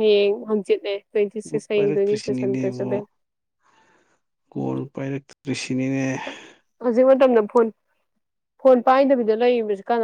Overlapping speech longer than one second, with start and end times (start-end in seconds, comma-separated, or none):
1.7-3.0